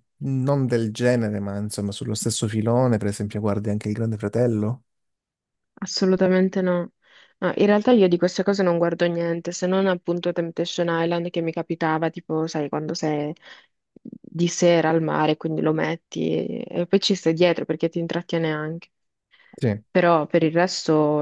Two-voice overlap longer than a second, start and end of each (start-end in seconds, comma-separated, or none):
none